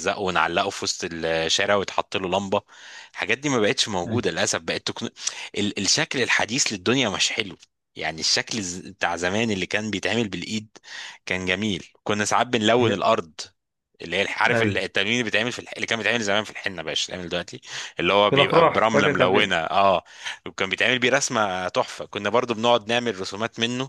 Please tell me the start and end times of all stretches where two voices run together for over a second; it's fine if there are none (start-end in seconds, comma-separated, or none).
18.3-19.6